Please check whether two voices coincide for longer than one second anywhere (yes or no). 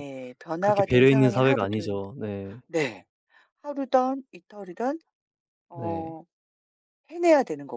yes